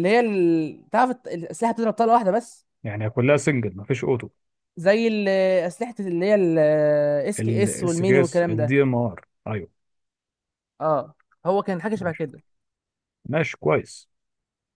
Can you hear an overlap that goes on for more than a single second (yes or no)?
yes